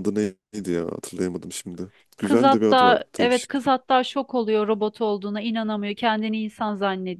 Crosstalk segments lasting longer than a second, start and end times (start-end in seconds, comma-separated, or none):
2.2-3.7